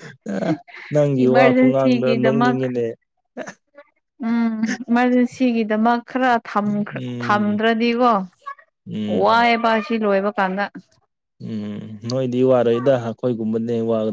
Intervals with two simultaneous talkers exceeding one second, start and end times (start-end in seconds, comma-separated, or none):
1.2-2.6